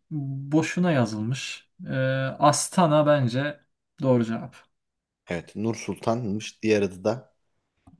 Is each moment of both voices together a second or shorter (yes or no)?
yes